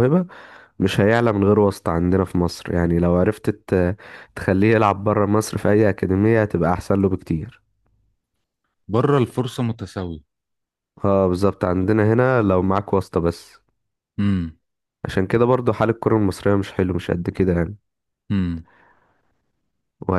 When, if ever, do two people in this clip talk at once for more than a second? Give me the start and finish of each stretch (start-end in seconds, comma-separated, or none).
none